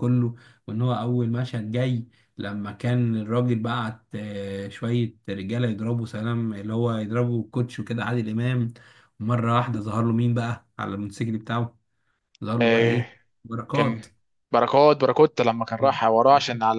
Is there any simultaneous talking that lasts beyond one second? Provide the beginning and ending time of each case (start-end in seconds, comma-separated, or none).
none